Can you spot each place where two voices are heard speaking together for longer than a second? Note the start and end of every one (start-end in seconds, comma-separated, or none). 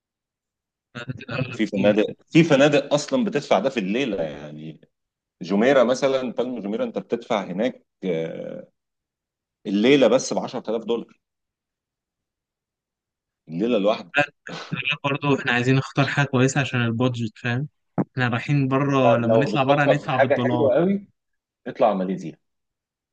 19.1-20.7